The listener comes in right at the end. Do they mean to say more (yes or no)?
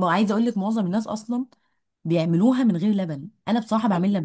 yes